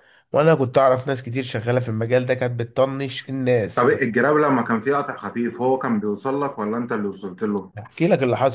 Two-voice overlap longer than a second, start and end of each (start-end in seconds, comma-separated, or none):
none